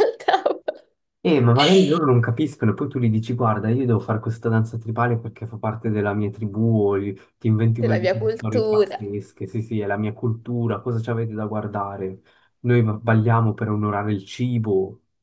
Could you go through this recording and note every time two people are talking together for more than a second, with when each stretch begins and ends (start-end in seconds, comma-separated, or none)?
7.8-9.0